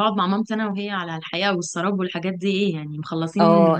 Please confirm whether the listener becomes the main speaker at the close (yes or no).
yes